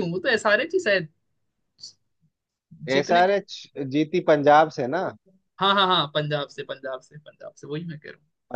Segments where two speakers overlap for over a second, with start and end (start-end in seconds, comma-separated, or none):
none